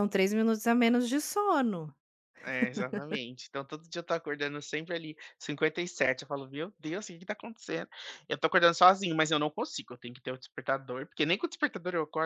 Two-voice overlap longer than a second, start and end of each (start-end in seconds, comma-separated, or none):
none